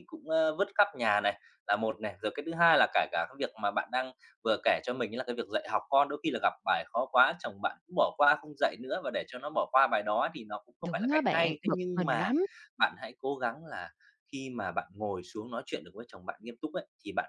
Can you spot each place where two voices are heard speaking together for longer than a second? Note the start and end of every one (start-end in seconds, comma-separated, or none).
10.8-12.3